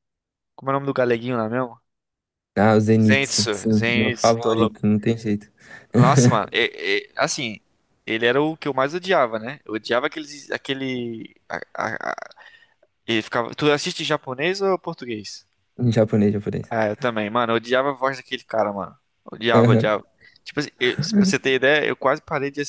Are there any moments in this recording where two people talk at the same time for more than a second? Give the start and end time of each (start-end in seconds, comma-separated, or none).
3.0-4.8